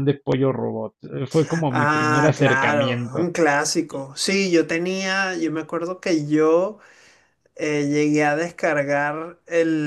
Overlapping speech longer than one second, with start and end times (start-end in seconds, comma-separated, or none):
1.7-3.3